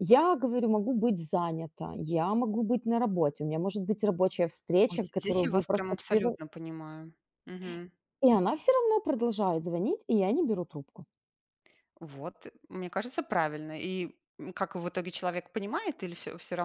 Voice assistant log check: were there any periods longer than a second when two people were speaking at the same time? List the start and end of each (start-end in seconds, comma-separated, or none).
4.9-6.4